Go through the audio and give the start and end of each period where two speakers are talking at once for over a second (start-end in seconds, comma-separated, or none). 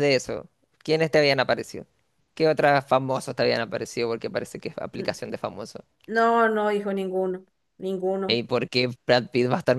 none